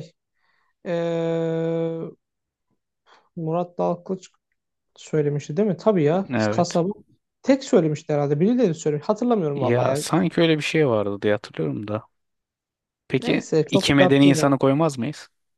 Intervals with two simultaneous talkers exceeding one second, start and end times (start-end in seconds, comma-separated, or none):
13.2-14.5